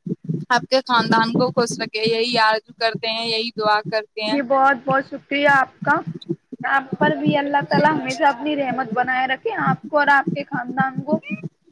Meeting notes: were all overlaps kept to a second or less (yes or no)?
yes